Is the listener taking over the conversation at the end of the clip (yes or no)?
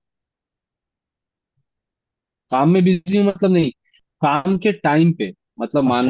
no